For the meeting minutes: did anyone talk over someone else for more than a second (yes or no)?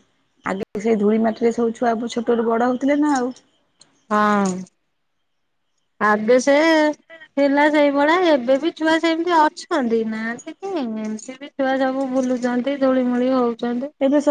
no